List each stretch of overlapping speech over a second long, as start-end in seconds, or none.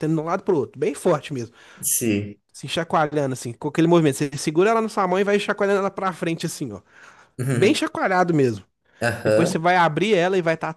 none